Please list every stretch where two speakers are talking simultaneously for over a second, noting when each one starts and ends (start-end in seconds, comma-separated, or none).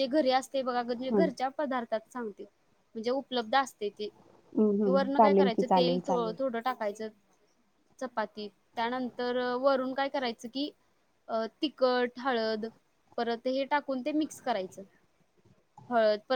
4.6-6.4